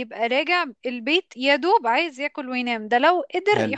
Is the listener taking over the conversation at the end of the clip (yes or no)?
no